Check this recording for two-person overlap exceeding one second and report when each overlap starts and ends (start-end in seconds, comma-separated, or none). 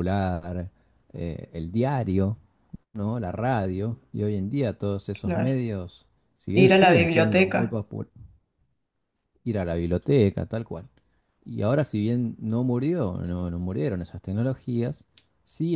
6.5-7.8